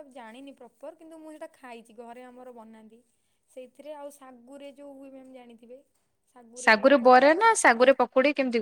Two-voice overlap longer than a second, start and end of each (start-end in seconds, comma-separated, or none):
none